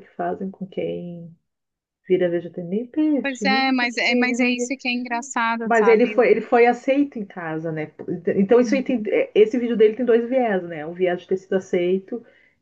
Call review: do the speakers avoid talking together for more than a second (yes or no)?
no